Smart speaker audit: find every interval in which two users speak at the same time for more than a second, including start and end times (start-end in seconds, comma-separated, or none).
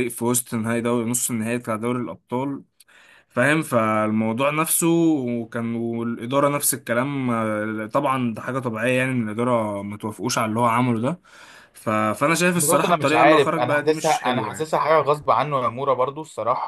12.6-14.7